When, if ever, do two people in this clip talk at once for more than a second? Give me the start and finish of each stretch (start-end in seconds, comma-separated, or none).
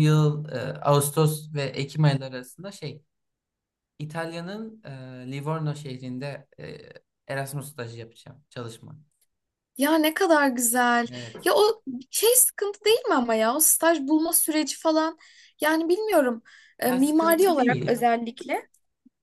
16.8-18.0